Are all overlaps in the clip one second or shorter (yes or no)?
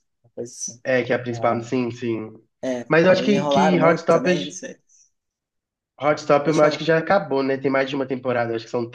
no